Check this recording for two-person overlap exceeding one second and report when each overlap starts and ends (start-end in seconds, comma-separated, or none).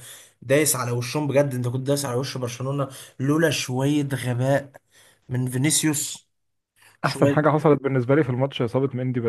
none